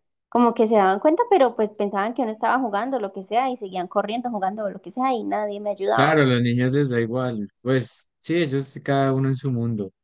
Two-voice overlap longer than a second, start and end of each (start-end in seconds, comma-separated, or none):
none